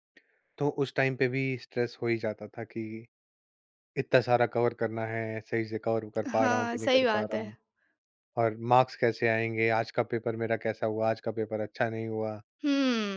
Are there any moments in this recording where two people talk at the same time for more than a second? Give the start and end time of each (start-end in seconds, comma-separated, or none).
6.3-7.5